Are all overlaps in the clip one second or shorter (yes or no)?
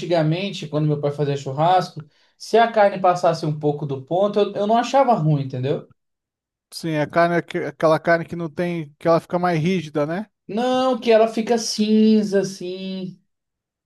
yes